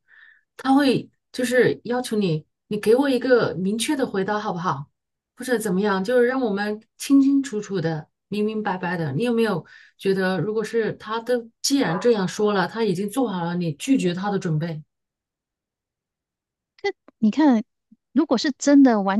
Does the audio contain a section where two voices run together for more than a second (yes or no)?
no